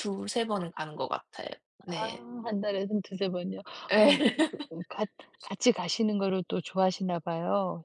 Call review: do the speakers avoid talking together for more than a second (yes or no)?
yes